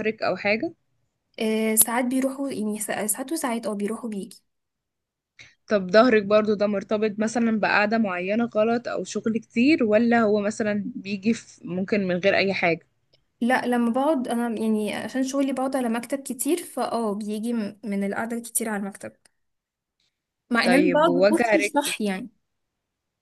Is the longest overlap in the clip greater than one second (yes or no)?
yes